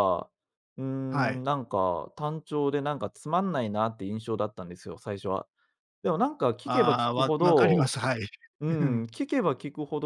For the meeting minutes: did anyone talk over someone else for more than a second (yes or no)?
yes